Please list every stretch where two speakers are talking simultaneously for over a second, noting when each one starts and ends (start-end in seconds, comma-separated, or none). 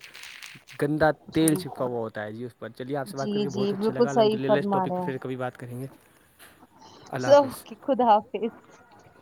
3.2-5.3